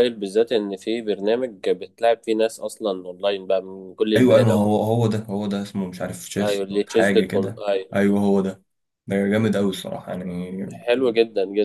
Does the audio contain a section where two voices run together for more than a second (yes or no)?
yes